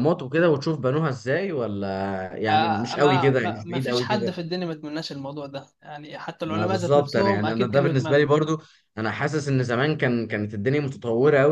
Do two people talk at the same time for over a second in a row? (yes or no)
yes